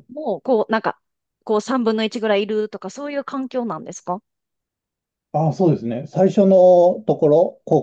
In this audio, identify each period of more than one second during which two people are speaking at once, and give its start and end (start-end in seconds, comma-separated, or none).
none